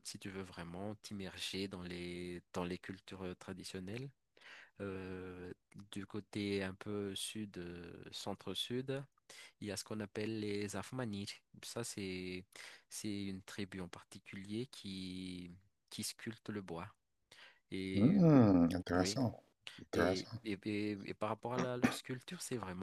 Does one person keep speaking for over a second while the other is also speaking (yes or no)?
no